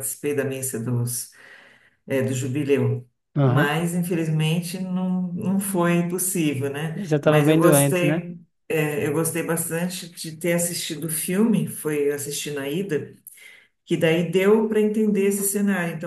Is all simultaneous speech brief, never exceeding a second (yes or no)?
no